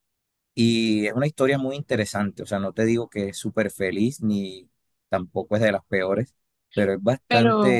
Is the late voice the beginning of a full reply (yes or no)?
no